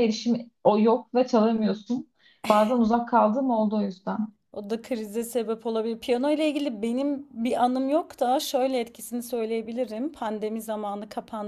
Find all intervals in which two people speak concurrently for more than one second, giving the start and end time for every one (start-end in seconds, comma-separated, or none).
none